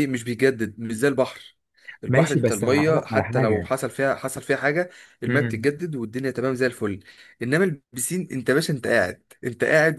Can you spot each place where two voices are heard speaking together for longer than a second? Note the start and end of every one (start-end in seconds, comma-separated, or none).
2.1-3.7